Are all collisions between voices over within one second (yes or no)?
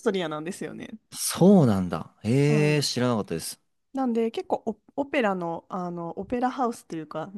yes